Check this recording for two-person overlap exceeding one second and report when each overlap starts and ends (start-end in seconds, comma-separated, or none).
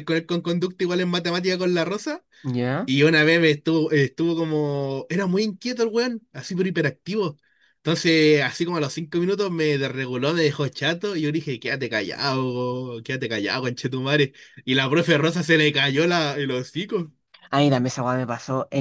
none